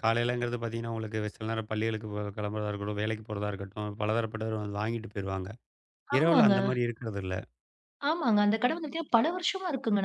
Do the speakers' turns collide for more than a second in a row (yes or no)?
no